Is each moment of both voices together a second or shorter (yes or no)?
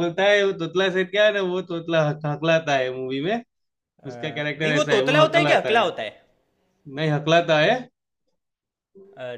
no